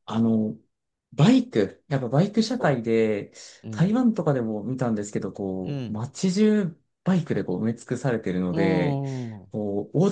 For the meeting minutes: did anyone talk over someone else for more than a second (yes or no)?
no